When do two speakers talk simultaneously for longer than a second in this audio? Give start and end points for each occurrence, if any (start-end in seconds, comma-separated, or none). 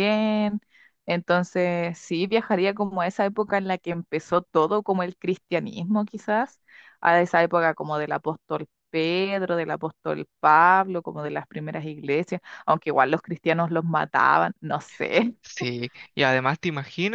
none